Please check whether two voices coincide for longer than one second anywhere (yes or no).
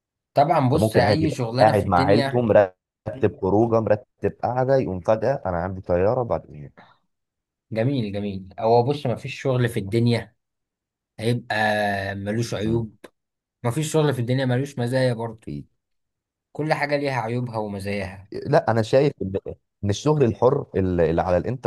yes